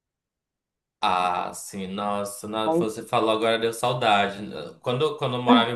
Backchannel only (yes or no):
yes